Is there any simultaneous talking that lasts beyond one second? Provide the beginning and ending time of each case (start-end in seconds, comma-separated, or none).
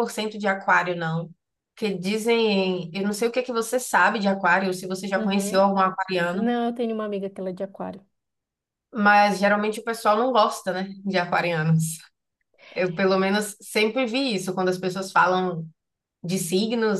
none